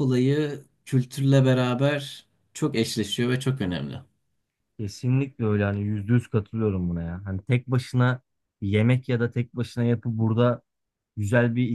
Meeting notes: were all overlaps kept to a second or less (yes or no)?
yes